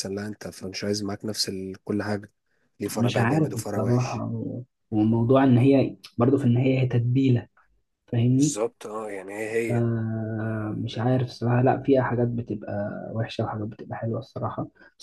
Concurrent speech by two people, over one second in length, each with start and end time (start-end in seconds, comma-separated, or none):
3.0-4.2